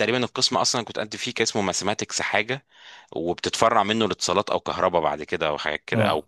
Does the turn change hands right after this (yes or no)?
no